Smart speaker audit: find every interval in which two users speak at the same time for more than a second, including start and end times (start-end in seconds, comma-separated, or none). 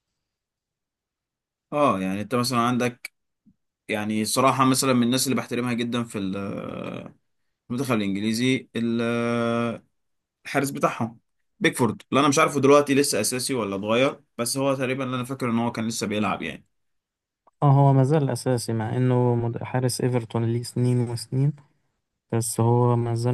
none